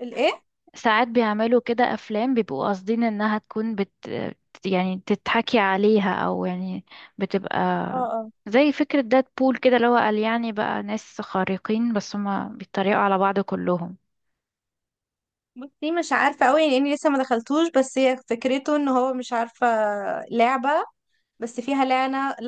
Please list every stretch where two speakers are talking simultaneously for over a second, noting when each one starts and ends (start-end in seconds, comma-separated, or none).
none